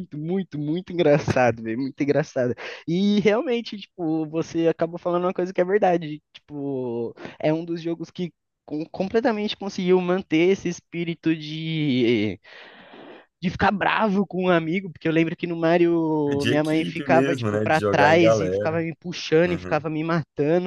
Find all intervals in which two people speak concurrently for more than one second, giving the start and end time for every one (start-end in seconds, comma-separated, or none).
16.3-18.8